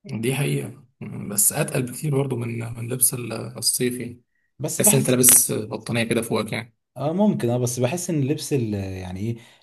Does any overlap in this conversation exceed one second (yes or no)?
no